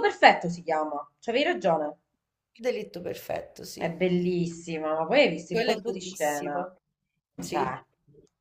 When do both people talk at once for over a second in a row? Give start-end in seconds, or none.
5.5-6.7